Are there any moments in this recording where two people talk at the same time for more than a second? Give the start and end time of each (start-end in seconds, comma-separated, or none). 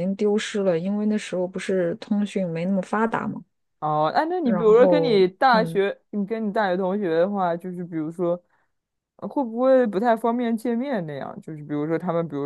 4.4-5.8